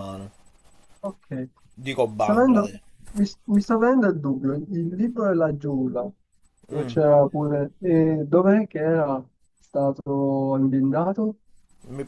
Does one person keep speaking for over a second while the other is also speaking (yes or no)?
no